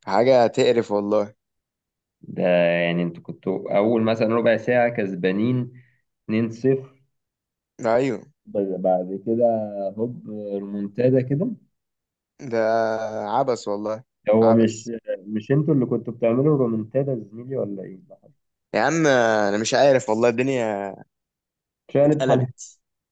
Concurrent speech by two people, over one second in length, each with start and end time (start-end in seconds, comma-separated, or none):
none